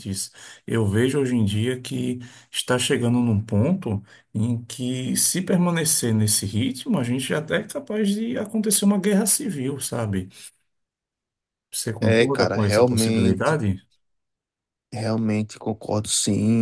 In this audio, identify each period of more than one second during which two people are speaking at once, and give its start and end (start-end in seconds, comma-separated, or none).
12.0-13.6